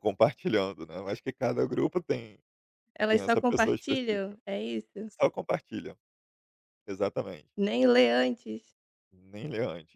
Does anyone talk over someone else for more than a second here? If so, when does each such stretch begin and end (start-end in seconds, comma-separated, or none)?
3.1-4.4